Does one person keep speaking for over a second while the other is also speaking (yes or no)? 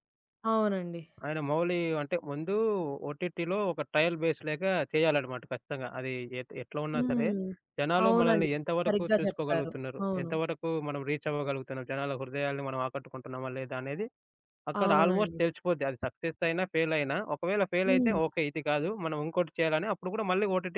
yes